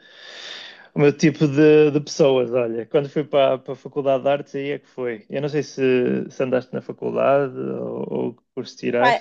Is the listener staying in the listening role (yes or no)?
no